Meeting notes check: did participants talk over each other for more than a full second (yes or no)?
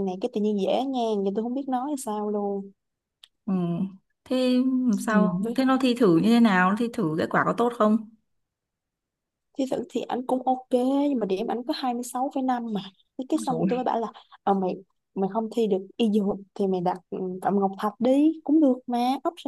no